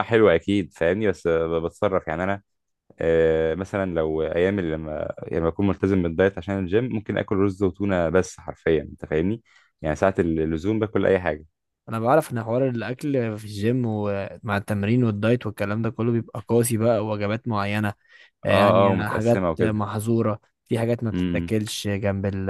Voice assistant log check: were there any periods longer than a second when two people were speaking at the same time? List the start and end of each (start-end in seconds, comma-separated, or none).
18.5-19.8